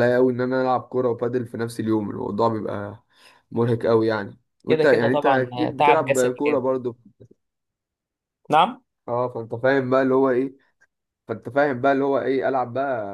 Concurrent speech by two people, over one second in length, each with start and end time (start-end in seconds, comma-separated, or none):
4.7-6.6